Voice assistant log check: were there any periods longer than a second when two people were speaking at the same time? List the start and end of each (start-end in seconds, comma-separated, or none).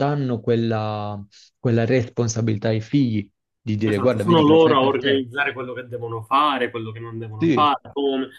3.9-5.2